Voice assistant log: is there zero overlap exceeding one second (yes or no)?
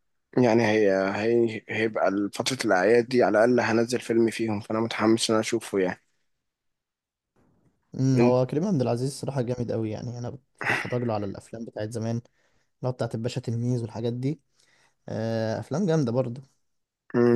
yes